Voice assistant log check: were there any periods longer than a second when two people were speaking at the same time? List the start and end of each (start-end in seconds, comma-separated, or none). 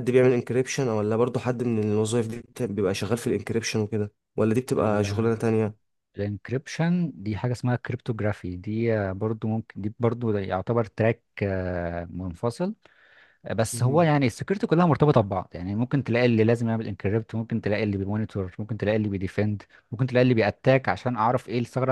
none